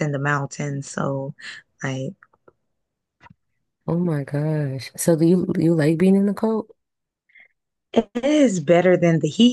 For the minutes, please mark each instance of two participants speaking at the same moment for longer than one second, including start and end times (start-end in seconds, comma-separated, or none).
none